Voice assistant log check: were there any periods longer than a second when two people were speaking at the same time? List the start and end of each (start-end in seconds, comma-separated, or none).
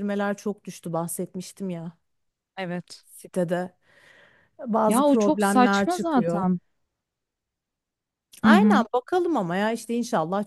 4.9-6.5